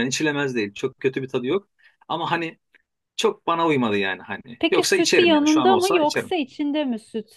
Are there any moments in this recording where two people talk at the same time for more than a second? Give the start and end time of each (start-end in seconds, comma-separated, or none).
4.6-6.3